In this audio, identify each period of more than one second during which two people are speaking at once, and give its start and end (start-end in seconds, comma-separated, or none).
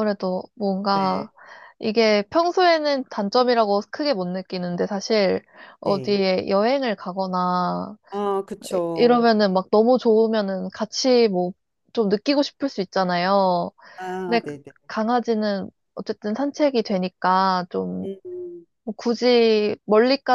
none